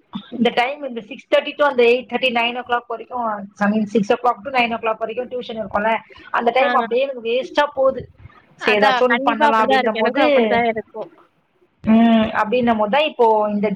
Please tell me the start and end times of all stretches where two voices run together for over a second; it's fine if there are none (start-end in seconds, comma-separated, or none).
8.7-10.2